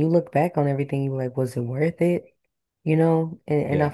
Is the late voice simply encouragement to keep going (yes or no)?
yes